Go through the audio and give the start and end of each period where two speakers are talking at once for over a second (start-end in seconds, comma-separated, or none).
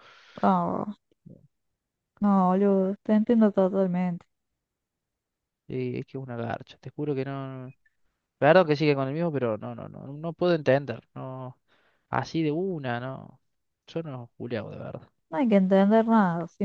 none